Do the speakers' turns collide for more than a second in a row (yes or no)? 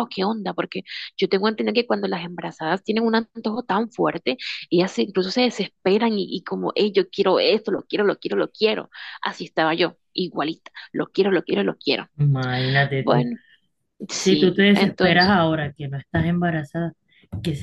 yes